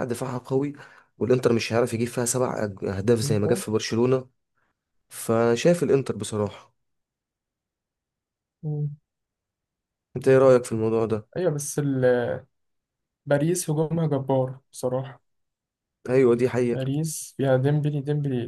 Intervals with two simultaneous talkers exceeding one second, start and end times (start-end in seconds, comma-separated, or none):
none